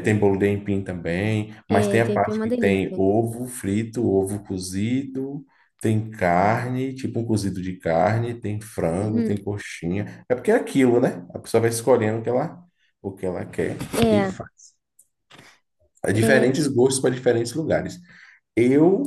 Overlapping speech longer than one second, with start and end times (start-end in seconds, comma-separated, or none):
1.7-3.0